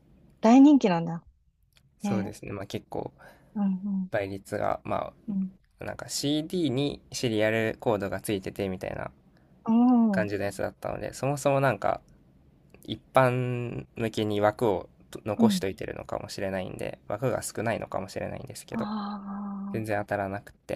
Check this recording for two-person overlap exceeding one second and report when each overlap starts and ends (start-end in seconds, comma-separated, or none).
none